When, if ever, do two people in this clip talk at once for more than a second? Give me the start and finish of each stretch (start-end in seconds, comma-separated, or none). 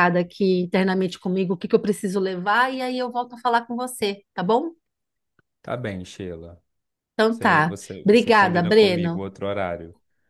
7.3-9.2